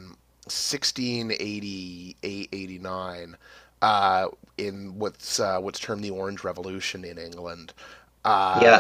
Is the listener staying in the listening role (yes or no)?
no